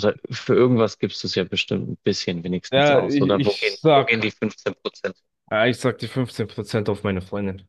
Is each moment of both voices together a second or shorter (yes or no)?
no